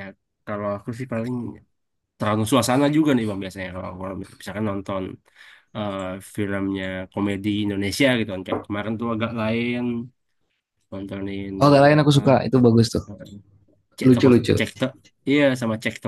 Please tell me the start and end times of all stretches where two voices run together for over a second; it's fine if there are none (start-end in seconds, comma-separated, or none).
none